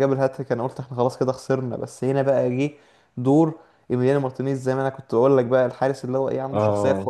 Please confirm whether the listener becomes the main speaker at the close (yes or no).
no